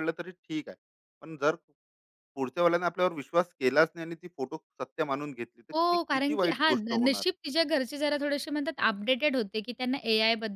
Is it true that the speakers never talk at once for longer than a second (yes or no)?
no